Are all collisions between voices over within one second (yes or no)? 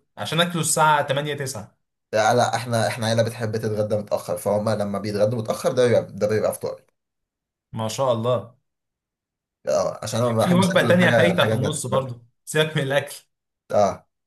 no